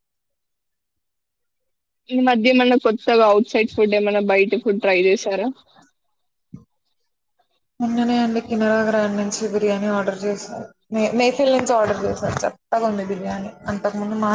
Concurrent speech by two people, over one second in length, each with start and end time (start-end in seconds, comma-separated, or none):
none